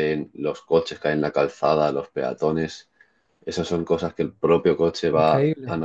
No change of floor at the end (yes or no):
yes